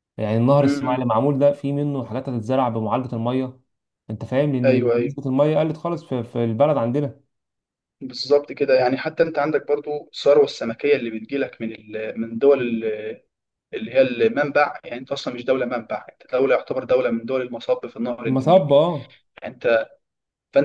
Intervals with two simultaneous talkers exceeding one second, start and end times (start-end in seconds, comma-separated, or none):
none